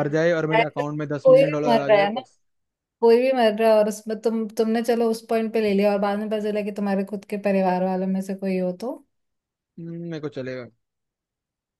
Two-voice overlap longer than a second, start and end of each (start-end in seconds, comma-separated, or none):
0.6-2.2